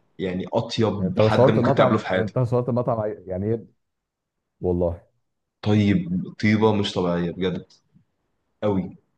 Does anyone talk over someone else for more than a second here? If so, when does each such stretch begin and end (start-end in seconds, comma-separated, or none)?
1.0-2.4